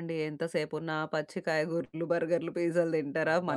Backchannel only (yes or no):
yes